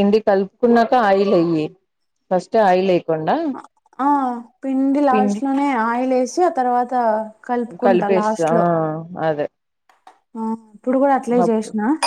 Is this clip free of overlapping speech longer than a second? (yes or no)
yes